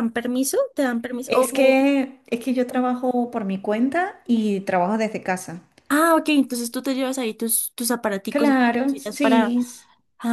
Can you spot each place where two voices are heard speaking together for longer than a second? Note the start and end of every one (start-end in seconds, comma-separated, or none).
8.3-9.6